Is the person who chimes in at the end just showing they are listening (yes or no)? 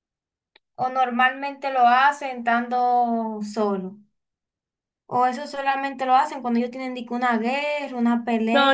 no